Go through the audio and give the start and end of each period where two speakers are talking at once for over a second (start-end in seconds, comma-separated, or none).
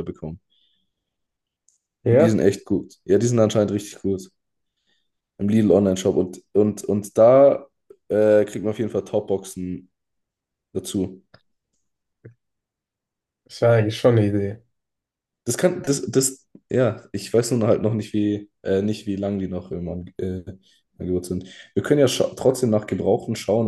none